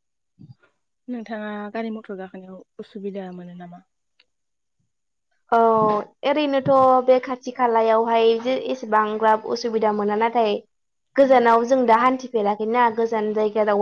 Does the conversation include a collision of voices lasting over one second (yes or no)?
no